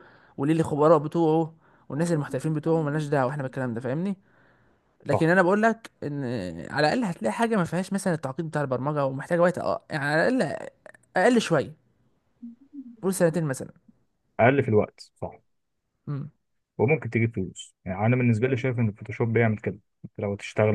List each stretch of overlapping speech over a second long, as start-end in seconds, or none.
none